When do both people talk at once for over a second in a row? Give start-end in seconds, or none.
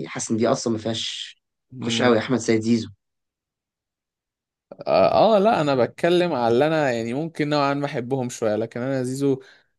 none